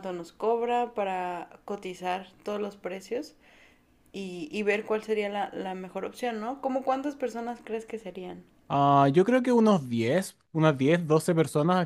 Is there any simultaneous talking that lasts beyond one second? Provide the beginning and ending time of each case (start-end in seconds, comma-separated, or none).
none